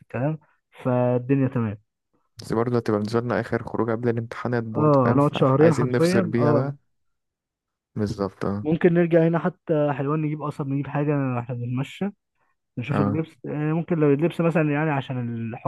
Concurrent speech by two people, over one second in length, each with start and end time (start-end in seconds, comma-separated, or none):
4.8-6.7